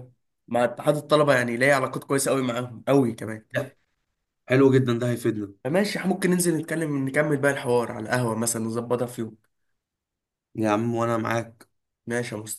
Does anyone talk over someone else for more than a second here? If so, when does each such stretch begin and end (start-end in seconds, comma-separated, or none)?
none